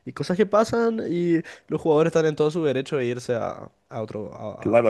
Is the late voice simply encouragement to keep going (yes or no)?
no